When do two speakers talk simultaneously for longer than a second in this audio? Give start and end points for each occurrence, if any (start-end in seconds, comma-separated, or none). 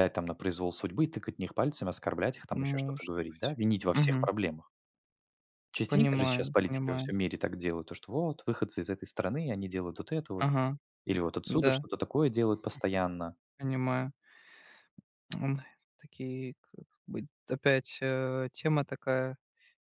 2.6-4.3, 5.8-7.1